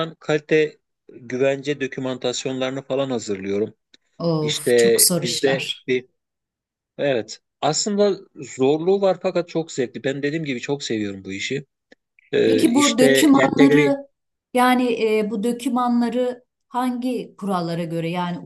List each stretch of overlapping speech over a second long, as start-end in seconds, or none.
4.4-5.9, 12.4-14.0